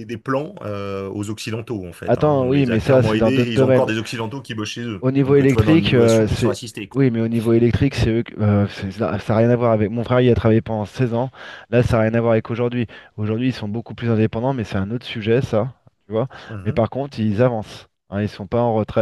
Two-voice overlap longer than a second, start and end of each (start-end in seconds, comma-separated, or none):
2.1-3.9, 5.0-7.0